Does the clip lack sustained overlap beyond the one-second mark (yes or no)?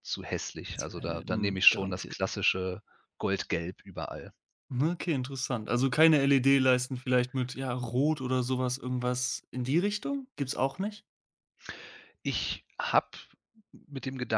no